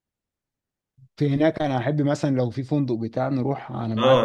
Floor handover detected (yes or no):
yes